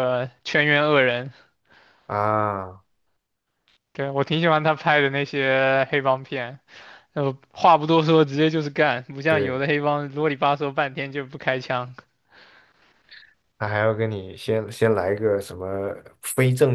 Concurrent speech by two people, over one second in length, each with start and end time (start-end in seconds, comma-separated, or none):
none